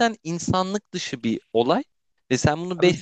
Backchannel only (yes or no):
yes